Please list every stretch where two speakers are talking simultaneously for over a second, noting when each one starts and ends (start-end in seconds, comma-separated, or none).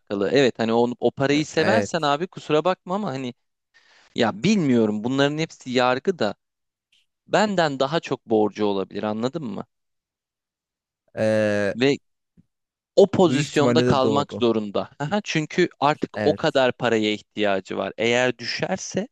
13.2-14.4